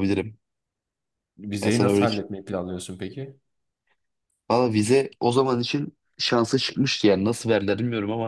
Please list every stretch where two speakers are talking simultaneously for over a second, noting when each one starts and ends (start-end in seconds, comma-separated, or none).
none